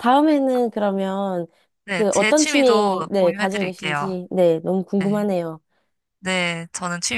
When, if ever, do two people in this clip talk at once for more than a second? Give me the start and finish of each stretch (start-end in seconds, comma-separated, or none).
1.9-4.2